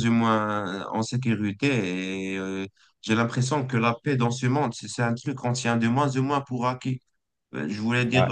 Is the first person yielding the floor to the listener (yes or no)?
no